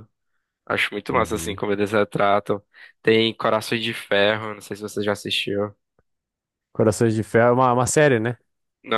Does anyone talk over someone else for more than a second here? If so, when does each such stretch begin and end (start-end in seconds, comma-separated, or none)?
none